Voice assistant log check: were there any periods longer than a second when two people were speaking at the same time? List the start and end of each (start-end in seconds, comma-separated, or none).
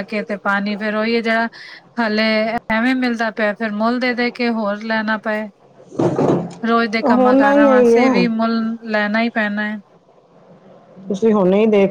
7.0-8.2